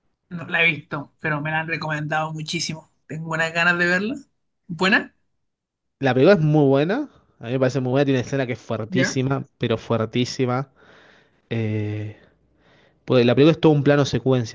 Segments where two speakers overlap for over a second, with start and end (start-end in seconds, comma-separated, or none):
none